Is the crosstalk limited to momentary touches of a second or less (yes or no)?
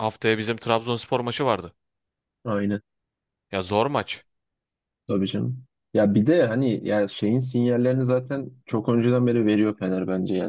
yes